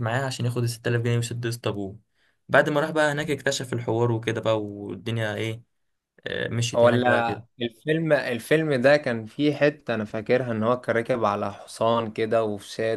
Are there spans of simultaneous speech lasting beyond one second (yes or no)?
no